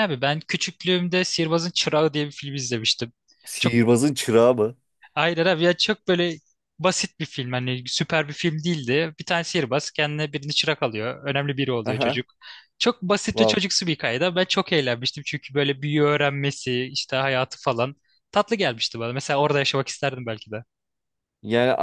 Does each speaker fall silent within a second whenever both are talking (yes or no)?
yes